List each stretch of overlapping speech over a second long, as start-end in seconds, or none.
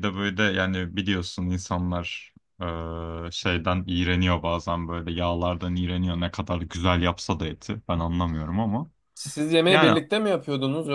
none